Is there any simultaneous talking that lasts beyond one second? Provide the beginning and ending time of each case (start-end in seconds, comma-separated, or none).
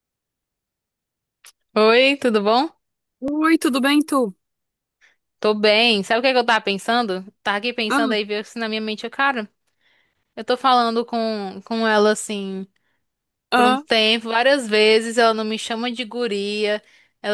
none